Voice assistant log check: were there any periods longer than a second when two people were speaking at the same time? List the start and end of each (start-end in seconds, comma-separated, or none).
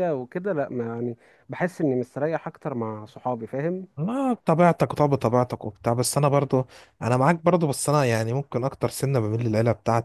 none